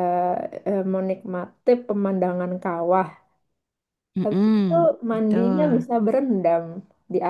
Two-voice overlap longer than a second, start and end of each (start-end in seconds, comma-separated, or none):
4.2-5.8